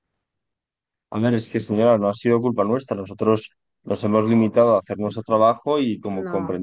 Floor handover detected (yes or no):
no